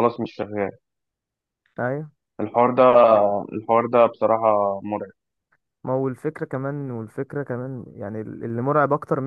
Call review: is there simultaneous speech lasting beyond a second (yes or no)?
no